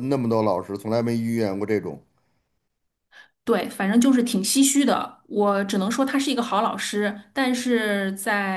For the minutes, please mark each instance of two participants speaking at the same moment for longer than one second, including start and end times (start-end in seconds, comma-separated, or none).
none